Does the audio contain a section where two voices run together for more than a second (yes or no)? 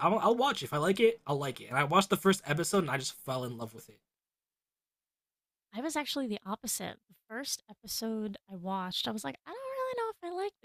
no